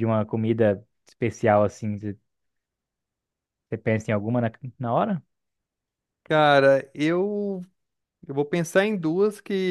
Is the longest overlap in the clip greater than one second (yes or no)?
no